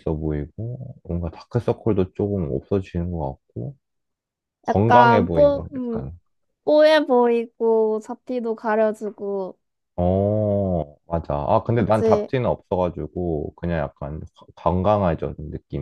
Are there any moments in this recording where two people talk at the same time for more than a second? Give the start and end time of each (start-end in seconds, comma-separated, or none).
4.7-6.0